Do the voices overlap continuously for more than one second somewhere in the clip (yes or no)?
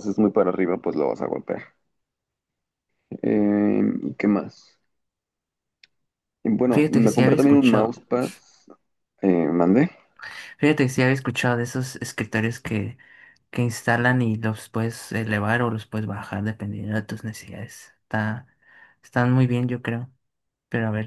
yes